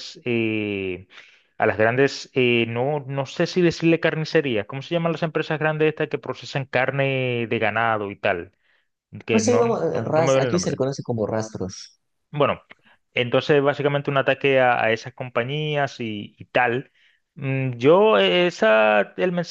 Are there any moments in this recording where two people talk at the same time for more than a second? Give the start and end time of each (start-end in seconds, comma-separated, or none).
9.3-10.8